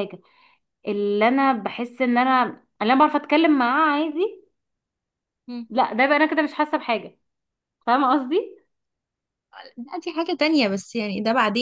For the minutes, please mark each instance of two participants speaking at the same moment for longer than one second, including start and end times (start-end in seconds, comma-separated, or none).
none